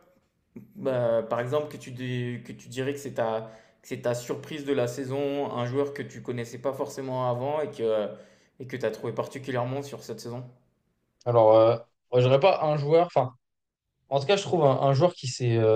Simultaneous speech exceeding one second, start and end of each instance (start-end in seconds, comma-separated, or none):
none